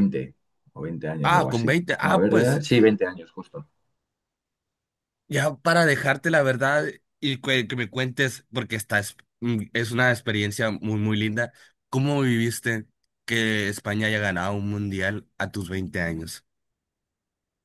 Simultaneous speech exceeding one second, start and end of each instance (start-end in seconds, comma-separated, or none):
1.2-2.6